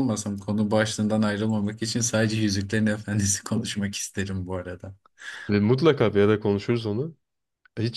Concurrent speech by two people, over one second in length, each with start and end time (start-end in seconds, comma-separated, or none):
none